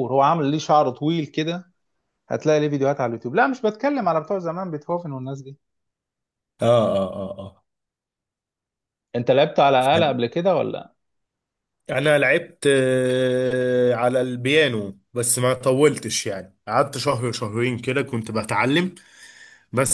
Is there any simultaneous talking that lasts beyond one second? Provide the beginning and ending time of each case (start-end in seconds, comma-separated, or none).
none